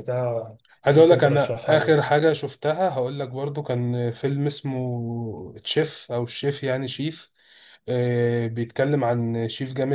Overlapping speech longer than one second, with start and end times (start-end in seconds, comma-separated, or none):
0.9-2.1